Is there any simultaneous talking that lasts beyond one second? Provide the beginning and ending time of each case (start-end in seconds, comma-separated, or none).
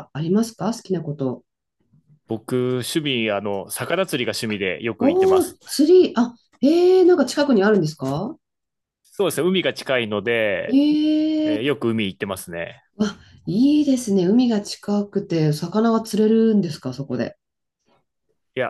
none